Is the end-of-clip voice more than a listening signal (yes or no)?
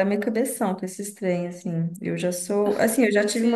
no